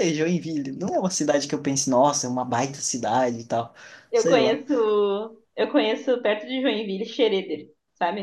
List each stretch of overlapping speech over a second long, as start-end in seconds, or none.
none